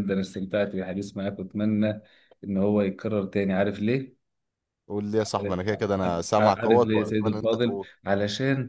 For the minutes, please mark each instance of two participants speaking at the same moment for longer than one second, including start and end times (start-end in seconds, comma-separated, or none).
5.2-7.9